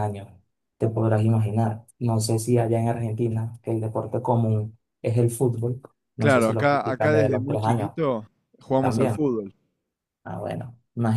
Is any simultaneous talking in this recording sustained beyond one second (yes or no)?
yes